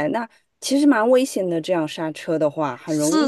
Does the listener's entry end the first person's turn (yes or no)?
yes